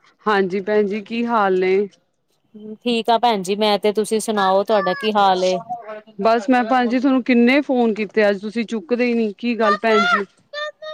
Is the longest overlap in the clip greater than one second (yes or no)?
no